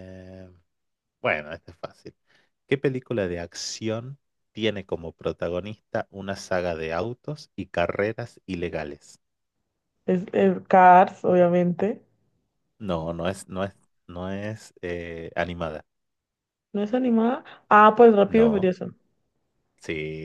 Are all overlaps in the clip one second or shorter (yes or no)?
yes